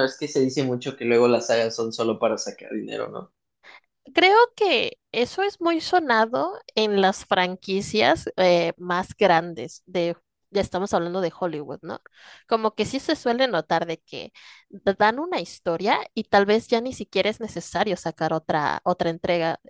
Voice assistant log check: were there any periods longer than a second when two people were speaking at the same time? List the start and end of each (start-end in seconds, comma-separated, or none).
none